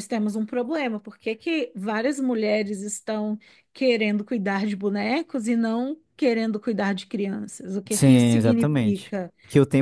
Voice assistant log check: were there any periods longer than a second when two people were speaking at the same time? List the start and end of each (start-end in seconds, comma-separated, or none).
7.9-9.3